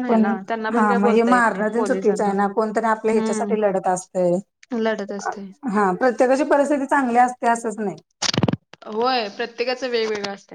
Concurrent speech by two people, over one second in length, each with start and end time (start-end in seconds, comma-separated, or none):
0.7-2.3